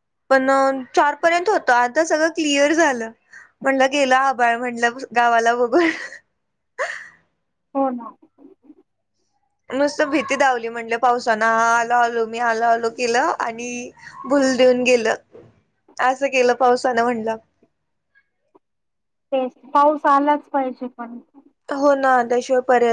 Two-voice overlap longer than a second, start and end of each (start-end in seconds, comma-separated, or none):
none